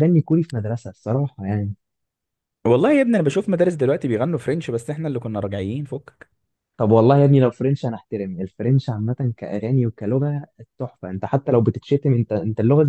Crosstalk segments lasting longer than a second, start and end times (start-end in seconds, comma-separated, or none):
none